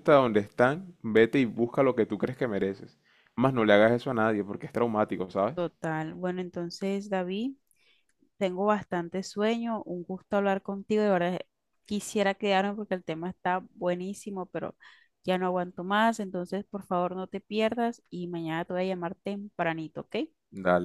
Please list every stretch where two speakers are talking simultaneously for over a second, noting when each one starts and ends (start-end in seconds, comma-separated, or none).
none